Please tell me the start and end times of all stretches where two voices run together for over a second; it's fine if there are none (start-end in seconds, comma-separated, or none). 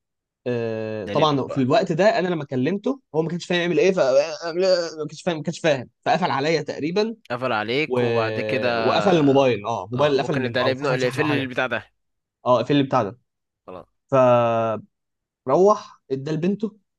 9.9-11.5